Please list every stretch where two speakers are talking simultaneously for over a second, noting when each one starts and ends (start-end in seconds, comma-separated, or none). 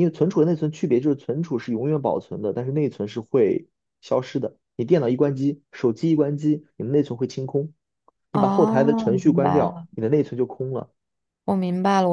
8.3-9.8